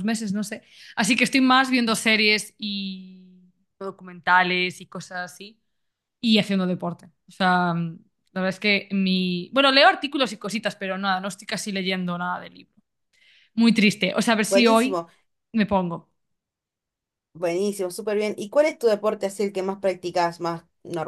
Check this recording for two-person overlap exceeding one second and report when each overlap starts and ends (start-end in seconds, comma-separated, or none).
none